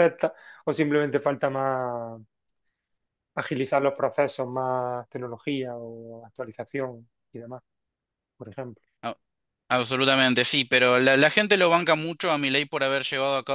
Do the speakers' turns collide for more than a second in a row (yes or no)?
no